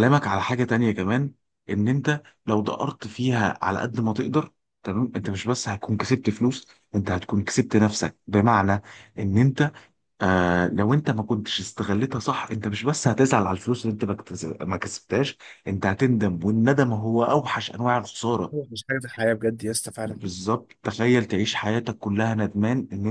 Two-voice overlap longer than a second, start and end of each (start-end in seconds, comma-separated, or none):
none